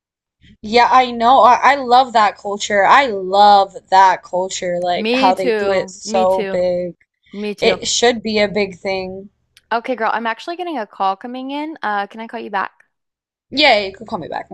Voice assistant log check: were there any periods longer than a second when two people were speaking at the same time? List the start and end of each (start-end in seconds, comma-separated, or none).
5.0-6.7